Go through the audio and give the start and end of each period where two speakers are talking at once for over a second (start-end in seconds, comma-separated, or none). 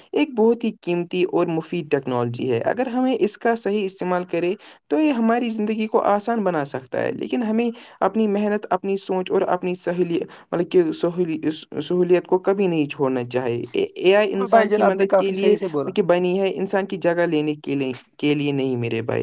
14.3-15.9